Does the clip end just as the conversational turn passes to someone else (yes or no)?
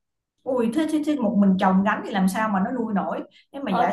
yes